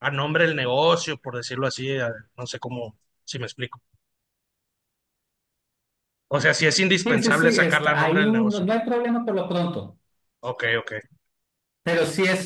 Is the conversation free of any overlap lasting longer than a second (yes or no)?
no